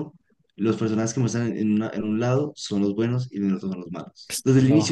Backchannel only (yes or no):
yes